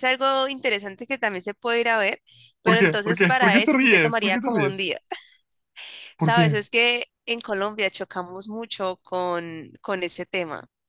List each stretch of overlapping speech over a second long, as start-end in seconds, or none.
2.6-4.9